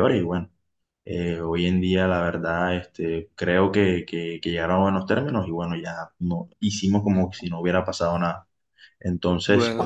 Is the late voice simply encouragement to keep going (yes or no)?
yes